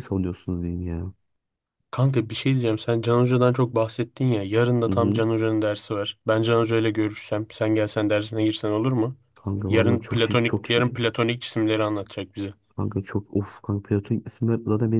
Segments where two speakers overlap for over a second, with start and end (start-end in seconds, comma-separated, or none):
9.7-11.0